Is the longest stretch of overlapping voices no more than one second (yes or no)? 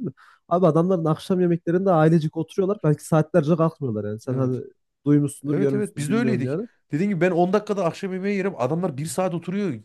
no